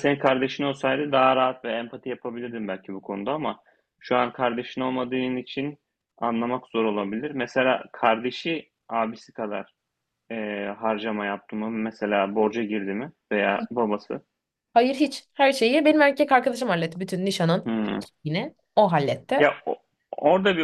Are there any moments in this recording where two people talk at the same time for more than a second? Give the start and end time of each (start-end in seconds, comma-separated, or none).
none